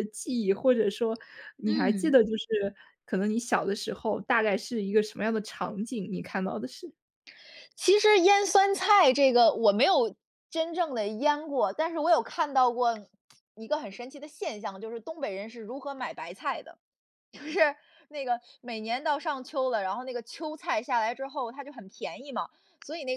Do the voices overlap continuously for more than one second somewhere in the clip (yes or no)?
no